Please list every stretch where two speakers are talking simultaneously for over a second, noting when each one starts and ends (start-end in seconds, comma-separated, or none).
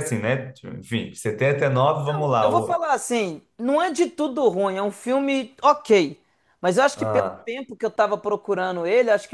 none